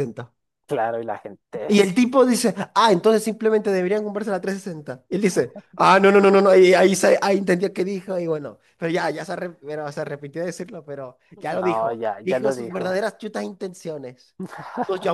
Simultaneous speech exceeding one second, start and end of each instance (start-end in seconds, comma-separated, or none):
11.6-13.0